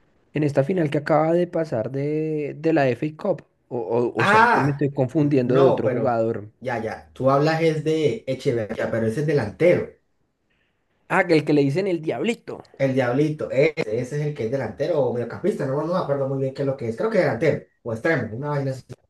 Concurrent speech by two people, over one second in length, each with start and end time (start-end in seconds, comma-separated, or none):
4.2-6.2